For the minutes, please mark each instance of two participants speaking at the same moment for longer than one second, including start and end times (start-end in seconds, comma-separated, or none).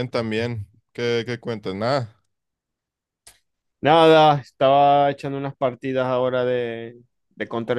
none